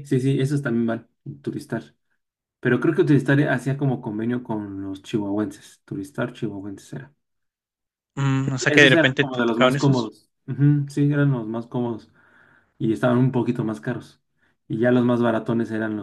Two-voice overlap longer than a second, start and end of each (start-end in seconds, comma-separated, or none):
8.7-10.1